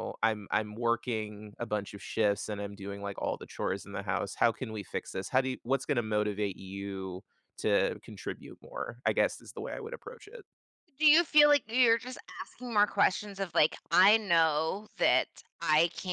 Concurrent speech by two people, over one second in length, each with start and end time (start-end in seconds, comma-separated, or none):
none